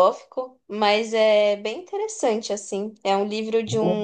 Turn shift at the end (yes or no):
no